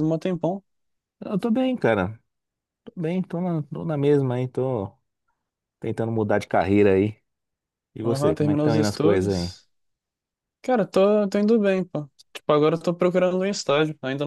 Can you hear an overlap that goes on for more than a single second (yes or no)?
yes